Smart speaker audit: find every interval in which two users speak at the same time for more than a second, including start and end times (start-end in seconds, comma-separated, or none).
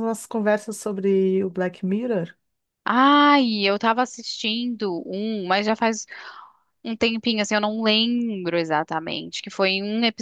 none